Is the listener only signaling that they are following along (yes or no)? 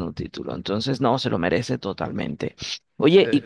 yes